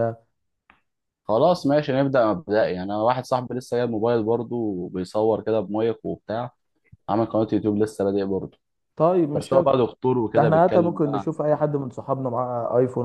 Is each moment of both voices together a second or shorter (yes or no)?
no